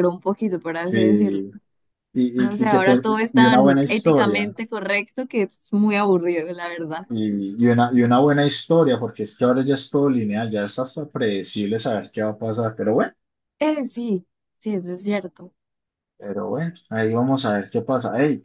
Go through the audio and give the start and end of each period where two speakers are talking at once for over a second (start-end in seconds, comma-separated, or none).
2.4-4.5